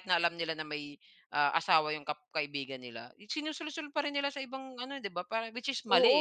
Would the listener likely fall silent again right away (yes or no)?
no